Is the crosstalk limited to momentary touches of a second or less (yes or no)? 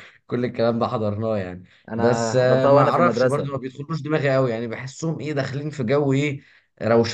no